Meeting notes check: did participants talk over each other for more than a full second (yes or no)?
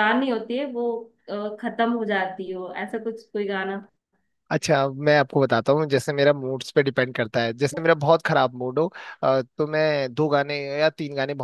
no